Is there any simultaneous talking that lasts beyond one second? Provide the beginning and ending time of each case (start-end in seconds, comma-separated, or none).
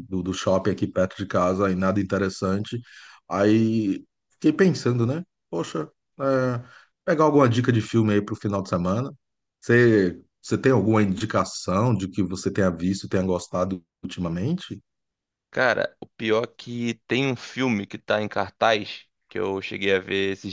none